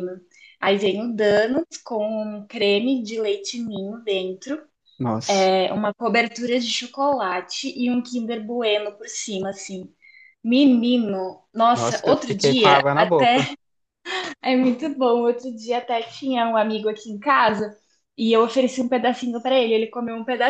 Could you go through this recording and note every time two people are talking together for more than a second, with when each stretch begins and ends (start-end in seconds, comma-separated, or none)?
11.7-13.5